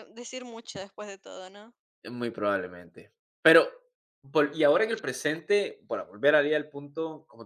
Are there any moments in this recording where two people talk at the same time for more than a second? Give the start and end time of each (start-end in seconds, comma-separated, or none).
none